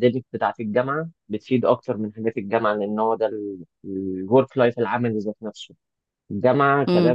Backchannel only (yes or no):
yes